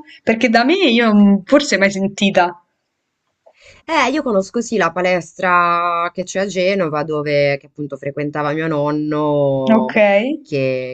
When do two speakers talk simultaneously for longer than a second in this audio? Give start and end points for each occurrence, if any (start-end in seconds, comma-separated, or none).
none